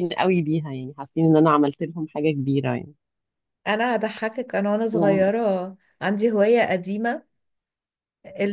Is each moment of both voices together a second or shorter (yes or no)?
yes